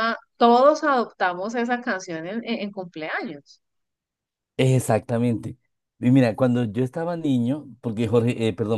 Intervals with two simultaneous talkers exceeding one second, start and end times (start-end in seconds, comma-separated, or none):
none